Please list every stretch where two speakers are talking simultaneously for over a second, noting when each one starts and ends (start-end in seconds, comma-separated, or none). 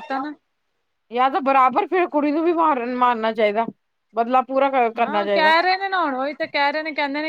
none